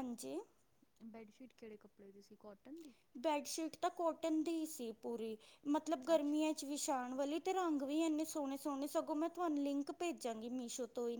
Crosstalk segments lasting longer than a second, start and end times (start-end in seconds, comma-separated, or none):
none